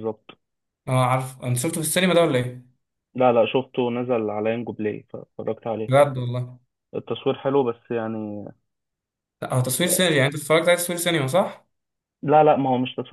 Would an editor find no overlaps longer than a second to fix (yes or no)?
yes